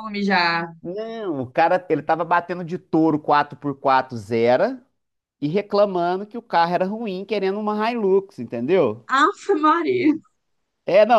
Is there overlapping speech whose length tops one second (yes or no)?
no